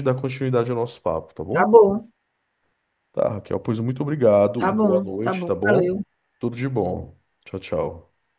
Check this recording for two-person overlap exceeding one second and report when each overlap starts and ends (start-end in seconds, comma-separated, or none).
4.6-6.0